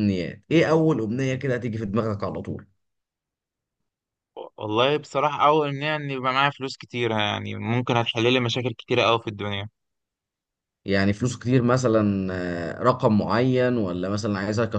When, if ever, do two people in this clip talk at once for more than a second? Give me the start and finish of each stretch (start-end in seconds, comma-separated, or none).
none